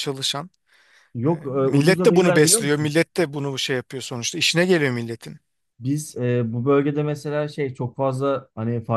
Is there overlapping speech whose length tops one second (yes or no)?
yes